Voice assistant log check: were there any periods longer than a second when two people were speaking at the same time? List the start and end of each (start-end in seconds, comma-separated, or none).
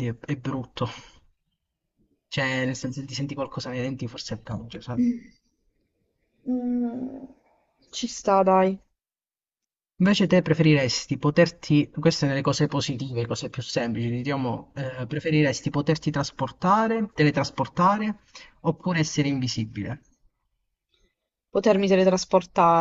none